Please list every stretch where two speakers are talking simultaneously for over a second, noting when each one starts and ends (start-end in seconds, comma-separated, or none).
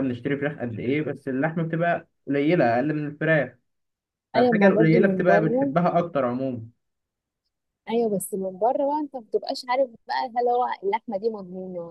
4.3-5.7